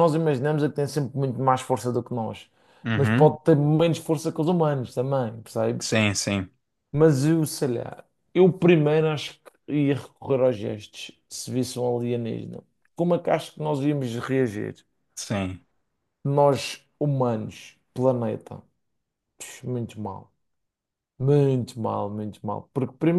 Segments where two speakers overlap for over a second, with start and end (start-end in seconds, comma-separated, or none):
none